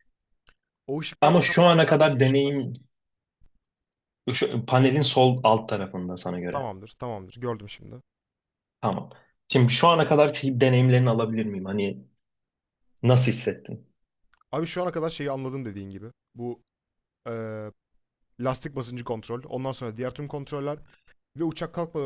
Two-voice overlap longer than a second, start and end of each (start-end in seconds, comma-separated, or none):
1.2-2.7